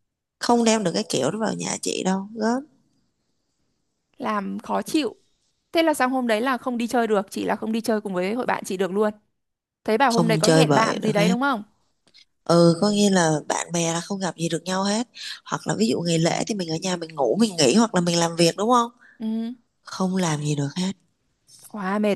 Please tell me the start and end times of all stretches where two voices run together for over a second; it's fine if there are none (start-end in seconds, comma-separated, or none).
10.2-11.3